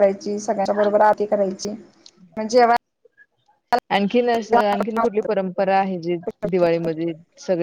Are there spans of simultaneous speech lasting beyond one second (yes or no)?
no